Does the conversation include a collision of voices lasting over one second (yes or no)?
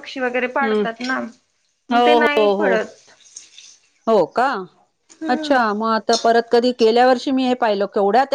no